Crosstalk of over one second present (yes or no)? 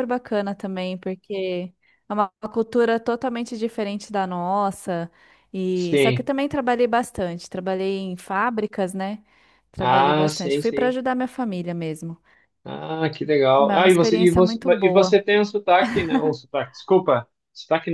yes